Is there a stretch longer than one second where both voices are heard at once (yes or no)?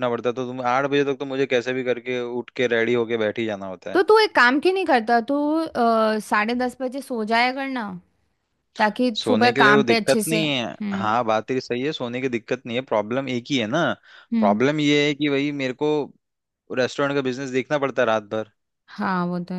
yes